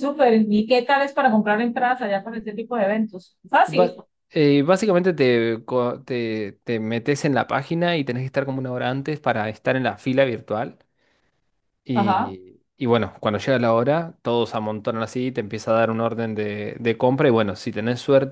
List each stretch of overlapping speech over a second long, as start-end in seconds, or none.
none